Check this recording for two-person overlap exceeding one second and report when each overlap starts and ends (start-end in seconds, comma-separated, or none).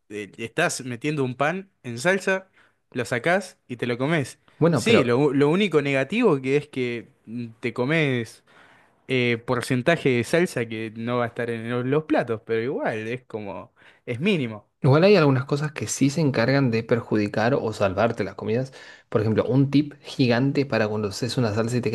none